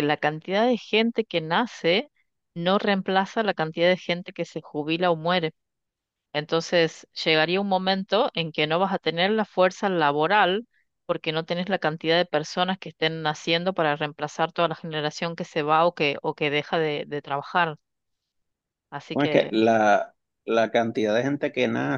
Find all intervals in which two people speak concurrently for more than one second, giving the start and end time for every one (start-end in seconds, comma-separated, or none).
none